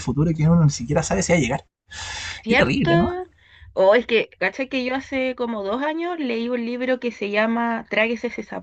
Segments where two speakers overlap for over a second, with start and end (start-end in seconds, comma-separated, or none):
none